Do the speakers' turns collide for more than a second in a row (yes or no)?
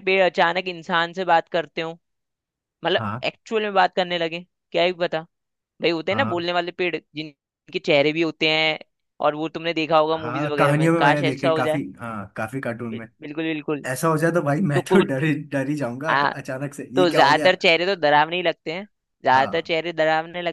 yes